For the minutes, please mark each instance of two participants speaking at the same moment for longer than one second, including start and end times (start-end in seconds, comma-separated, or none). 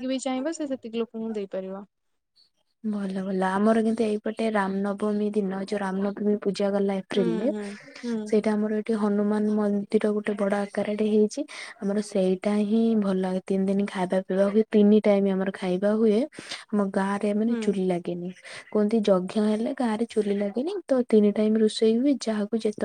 none